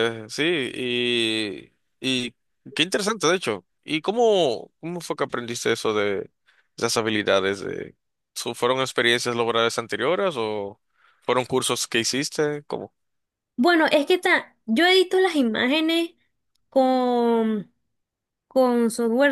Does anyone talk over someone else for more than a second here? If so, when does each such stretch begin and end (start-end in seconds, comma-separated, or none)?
none